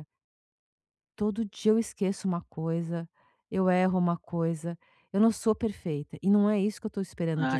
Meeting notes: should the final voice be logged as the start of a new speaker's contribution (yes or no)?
yes